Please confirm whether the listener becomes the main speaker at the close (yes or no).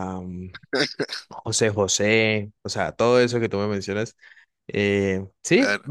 no